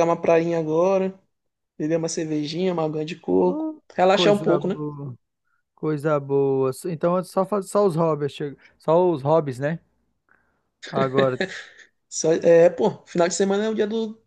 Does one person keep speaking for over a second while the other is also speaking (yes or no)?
yes